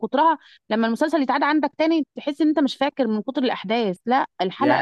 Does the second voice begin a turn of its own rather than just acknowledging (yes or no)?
yes